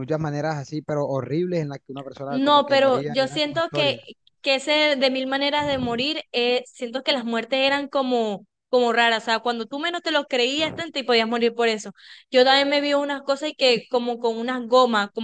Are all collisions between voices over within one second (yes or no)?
no